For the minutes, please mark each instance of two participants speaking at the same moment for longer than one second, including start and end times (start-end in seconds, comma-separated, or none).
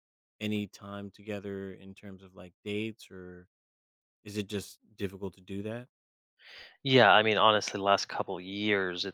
none